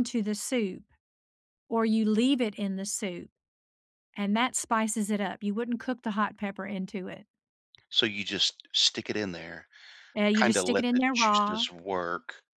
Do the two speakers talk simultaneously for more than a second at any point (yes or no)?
yes